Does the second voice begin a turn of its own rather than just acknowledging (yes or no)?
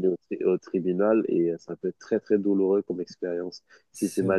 no